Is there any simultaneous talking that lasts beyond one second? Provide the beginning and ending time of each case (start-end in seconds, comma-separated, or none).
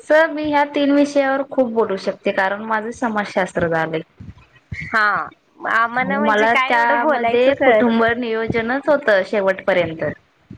6.0-8.0